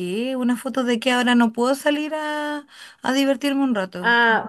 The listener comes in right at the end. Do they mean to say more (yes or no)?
yes